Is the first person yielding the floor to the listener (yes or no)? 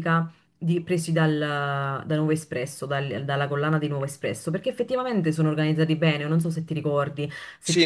yes